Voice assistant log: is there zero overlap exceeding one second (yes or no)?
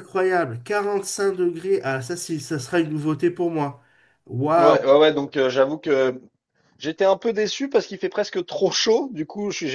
yes